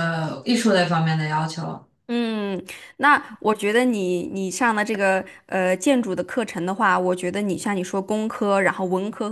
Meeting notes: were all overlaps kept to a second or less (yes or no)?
yes